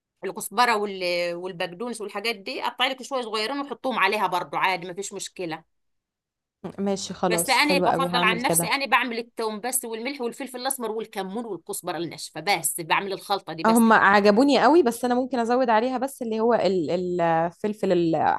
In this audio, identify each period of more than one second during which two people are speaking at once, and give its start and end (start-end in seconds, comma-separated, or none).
7.2-8.7